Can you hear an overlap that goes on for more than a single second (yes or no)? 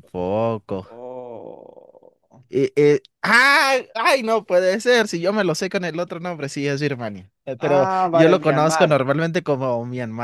yes